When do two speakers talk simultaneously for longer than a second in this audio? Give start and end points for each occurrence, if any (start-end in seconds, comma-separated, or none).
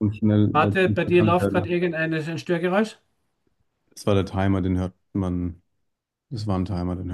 0.5-1.8